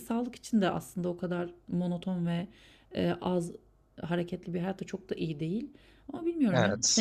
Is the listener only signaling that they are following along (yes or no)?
yes